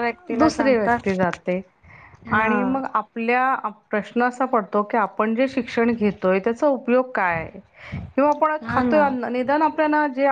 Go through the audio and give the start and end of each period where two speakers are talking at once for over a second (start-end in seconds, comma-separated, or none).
none